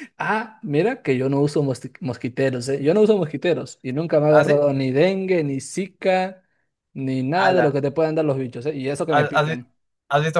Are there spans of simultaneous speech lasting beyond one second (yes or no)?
no